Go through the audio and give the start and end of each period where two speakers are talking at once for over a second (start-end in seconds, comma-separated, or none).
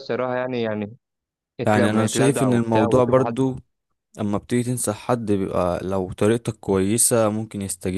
1.8-3.5